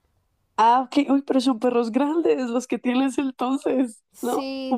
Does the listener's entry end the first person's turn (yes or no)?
yes